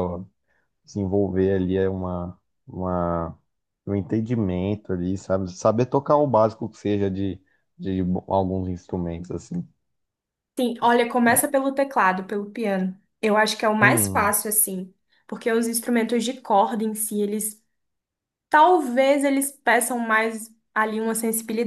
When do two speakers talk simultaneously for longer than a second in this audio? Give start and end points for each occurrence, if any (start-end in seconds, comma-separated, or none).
none